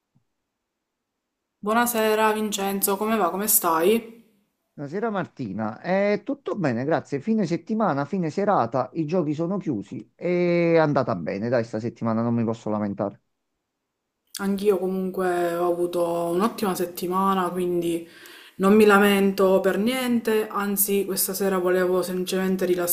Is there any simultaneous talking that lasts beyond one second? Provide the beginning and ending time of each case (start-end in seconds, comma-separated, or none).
none